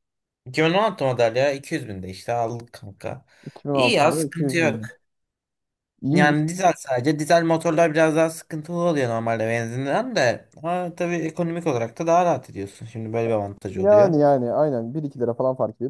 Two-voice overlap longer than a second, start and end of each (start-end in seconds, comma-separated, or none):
3.7-4.9